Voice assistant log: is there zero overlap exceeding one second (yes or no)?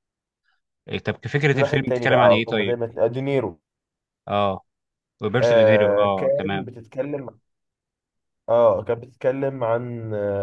no